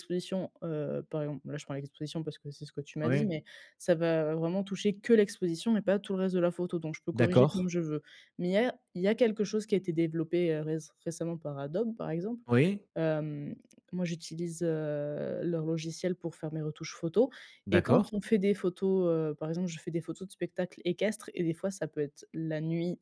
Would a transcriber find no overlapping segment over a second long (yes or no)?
yes